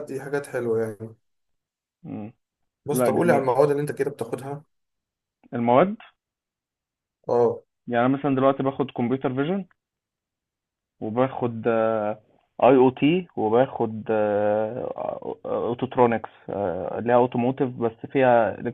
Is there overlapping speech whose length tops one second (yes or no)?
no